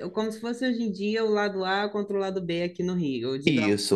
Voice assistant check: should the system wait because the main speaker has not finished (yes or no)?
no